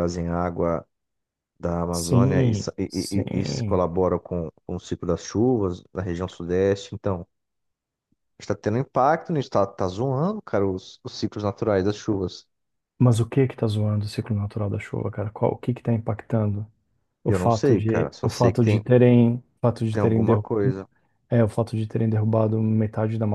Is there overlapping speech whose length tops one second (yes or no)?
yes